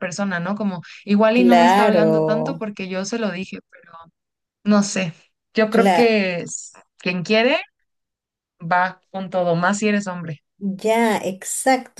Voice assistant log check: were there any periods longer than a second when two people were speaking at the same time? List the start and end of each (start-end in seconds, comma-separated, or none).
1.3-2.7